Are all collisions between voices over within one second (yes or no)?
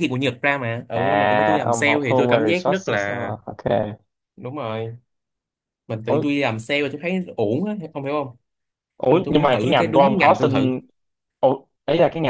no